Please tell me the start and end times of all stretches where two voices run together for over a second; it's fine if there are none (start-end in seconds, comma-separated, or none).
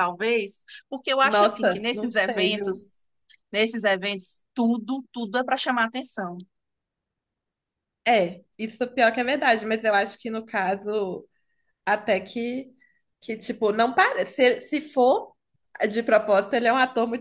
1.2-2.9